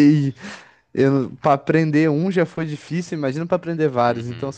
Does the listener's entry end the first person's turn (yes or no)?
yes